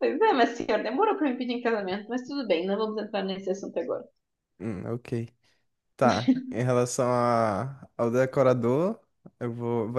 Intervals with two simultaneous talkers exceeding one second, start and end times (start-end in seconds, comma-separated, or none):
none